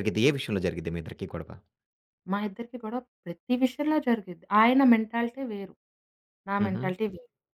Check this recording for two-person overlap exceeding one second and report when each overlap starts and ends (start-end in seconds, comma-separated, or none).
none